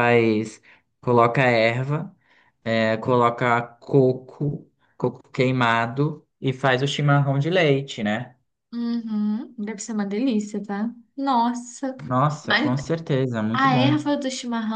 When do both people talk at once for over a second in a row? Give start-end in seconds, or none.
none